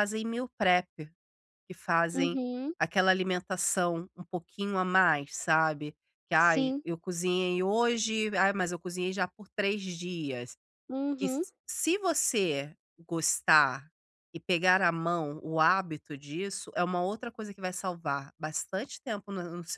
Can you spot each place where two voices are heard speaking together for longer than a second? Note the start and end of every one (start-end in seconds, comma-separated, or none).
none